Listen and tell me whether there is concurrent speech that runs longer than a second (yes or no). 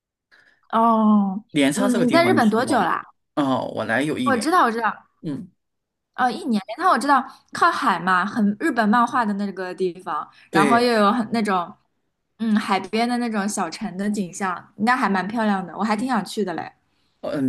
yes